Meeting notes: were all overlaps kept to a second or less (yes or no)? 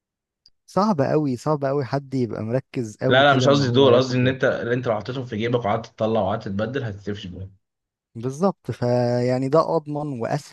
no